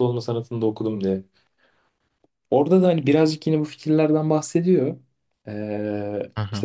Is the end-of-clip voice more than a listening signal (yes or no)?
no